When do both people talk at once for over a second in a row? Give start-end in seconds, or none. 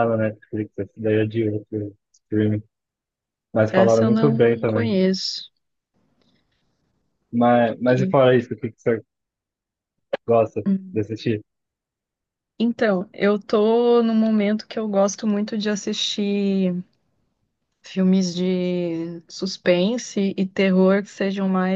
3.7-5.0